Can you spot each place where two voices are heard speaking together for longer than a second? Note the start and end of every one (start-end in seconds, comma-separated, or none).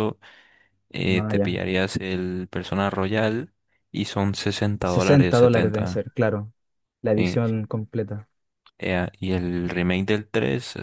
4.8-6.0